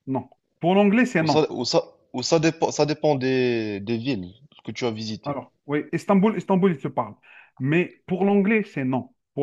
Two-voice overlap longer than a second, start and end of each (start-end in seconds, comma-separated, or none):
none